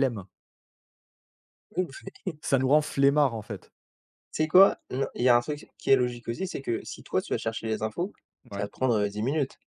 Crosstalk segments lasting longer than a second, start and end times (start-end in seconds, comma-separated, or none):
none